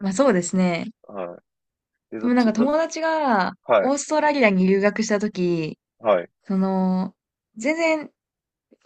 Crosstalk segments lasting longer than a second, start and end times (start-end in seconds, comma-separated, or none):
none